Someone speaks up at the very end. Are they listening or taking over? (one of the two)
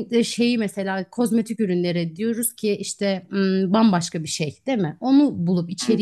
listening